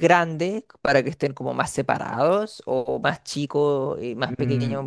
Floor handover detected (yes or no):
yes